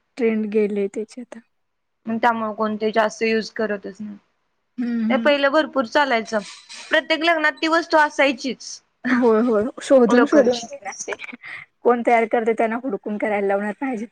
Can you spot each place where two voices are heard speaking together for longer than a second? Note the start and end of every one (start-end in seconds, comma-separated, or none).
none